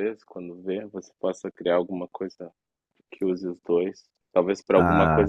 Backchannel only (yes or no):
yes